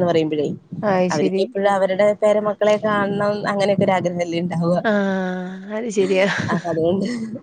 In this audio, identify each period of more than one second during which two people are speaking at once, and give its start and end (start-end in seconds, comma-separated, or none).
none